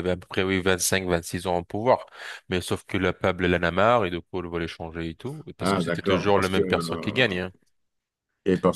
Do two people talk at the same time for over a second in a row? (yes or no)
yes